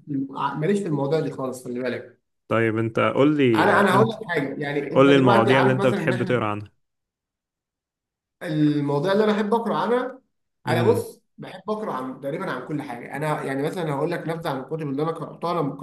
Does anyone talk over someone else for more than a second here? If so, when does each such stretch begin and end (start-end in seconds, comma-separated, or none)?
4.9-6.4